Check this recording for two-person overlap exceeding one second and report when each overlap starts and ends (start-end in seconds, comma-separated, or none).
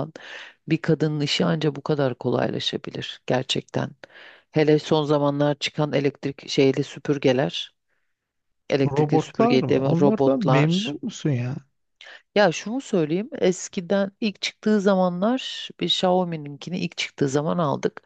8.9-10.9